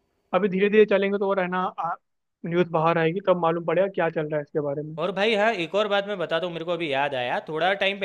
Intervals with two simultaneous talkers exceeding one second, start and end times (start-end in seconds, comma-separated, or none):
none